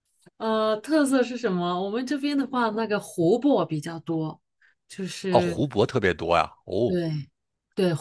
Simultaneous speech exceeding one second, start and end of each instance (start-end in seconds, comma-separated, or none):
none